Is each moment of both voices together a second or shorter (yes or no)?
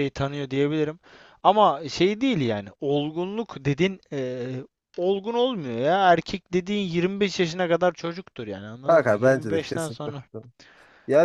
no